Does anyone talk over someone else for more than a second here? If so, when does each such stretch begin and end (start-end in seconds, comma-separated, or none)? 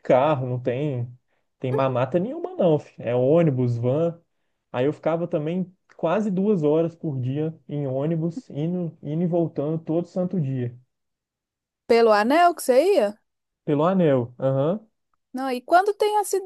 none